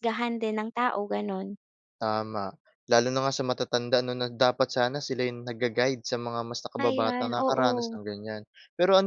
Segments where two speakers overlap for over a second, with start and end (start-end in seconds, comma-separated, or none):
6.8-8.0